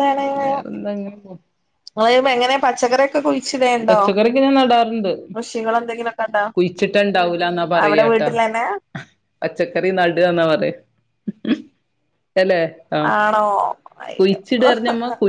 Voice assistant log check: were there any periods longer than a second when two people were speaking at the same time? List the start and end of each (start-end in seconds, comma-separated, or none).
none